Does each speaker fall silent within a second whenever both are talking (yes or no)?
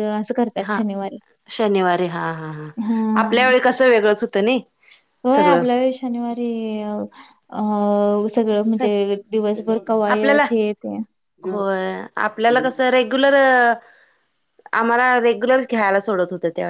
yes